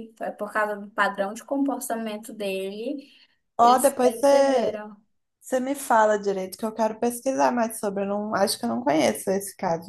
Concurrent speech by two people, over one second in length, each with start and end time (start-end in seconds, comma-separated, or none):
3.6-4.8